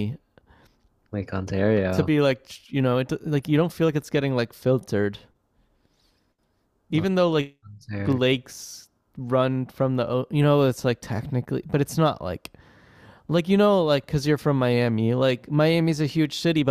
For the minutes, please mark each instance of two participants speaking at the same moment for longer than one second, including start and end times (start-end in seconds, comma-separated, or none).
none